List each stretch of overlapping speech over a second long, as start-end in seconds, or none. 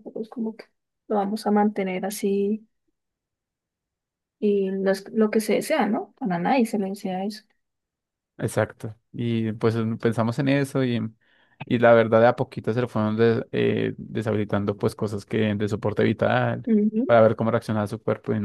none